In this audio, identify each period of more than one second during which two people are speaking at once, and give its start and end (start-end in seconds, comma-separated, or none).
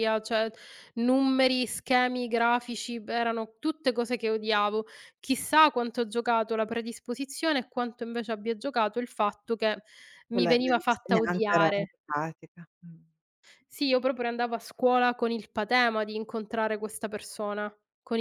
10.3-11.9